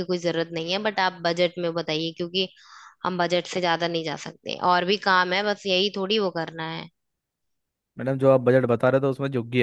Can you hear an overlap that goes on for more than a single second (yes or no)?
no